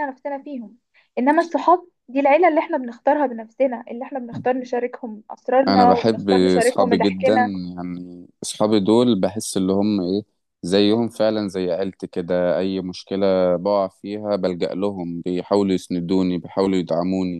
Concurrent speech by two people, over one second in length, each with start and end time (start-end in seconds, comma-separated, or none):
5.7-7.3